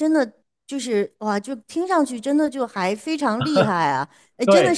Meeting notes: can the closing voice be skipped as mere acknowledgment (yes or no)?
no